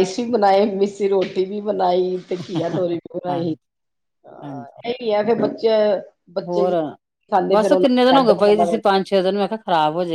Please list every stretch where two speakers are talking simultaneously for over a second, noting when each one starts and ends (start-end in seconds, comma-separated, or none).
7.5-9.0